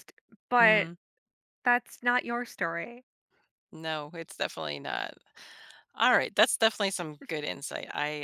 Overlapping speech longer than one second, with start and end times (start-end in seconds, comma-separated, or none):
none